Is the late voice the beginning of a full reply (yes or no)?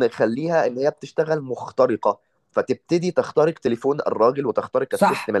yes